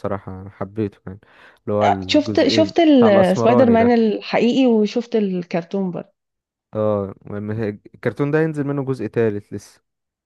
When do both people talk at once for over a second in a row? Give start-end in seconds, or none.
2.1-4.0